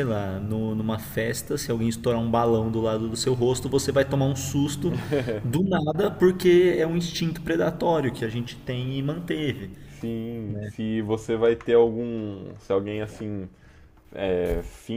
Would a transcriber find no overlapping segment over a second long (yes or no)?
yes